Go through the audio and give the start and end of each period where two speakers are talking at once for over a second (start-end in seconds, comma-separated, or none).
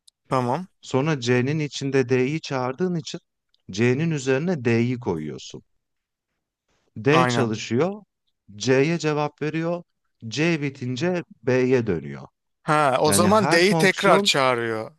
13.1-14.3